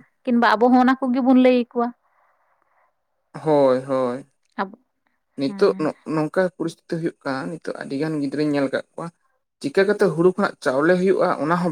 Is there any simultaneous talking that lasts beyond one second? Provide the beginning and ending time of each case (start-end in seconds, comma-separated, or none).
none